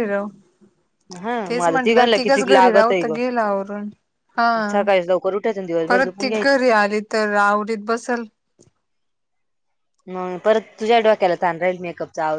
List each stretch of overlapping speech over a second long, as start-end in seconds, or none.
1.5-3.1